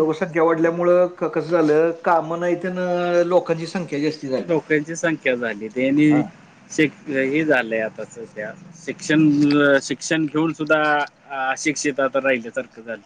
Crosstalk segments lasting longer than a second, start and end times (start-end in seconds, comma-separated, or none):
none